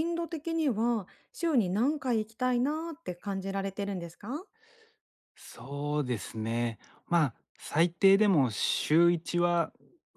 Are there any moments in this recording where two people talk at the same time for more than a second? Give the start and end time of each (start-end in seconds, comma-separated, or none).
none